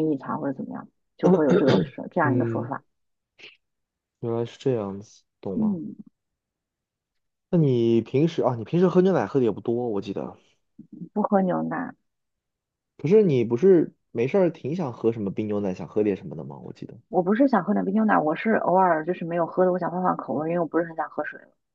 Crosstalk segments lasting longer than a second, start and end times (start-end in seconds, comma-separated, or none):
none